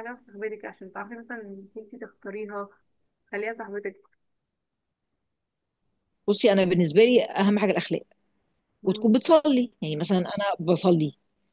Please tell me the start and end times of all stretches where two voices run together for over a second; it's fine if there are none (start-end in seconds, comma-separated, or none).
none